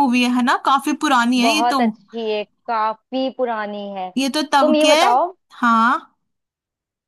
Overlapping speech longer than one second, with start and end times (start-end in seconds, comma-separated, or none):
none